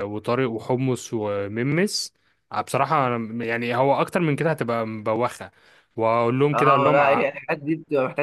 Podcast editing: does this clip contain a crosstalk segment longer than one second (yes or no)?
no